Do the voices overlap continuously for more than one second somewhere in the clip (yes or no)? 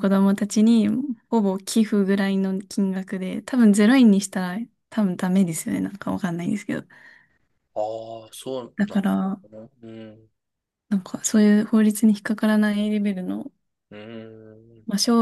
no